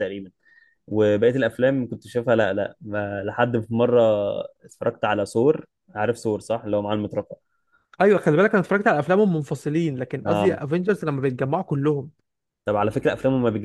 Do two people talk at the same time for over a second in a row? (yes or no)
no